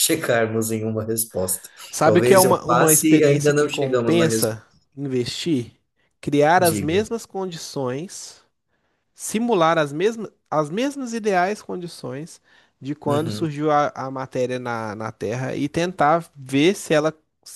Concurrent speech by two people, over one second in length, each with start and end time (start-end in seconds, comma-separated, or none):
1.9-4.6